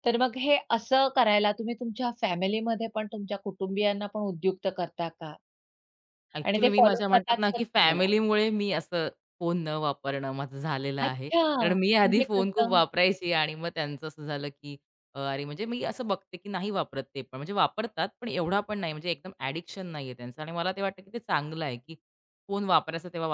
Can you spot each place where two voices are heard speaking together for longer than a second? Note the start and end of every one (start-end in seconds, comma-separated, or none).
6.5-8.0, 11.1-12.8